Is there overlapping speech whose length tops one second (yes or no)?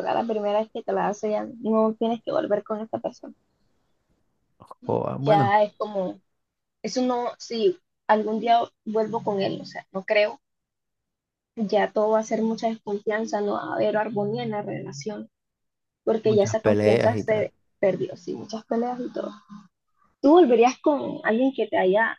yes